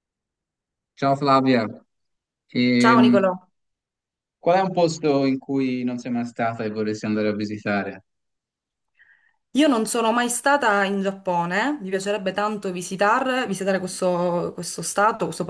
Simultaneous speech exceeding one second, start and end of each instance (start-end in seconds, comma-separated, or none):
none